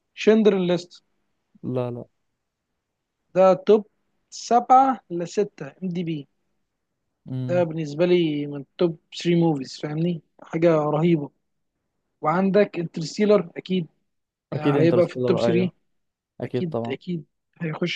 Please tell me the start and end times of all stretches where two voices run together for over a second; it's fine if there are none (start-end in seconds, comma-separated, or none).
14.5-15.7